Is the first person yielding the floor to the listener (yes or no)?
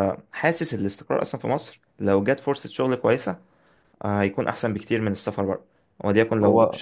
no